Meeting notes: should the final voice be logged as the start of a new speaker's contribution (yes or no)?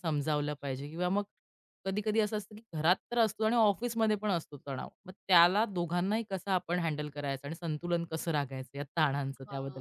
yes